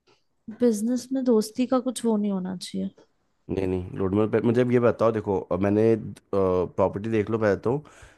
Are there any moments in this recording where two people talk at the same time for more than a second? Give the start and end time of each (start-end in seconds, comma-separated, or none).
none